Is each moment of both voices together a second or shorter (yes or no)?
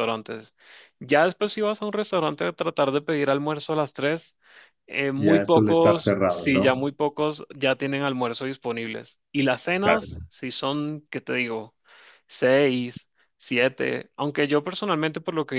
no